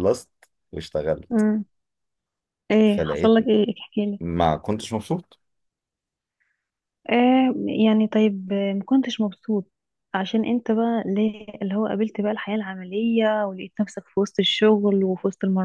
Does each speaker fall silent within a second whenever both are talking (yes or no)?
yes